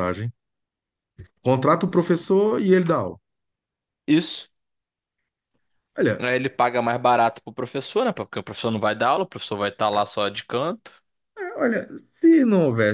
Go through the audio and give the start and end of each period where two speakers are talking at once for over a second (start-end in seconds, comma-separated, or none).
none